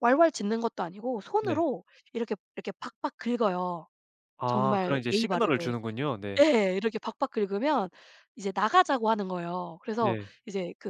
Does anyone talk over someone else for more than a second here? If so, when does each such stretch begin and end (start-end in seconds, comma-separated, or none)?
4.5-5.8